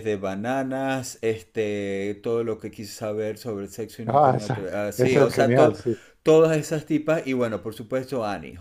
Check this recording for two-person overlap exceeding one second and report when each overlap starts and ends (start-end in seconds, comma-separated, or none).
4.0-5.8